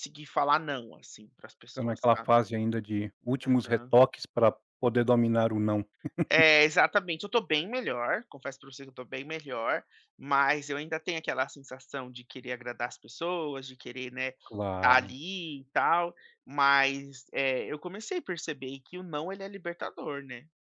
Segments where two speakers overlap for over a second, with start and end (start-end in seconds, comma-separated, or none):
none